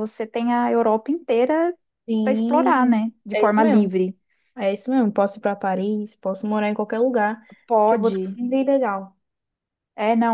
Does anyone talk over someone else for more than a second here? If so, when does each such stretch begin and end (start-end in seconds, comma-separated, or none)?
2.2-3.9